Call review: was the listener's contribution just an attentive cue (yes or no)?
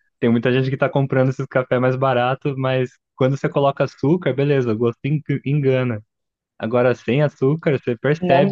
yes